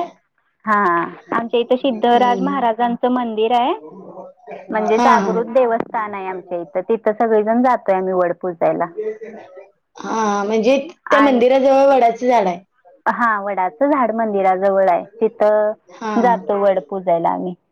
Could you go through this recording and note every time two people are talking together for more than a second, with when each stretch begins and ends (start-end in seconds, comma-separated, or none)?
1.4-2.7